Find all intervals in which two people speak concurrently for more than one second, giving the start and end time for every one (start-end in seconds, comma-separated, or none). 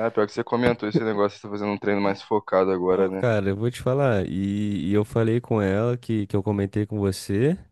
none